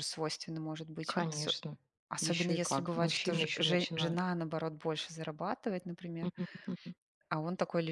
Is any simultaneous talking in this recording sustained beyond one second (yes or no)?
yes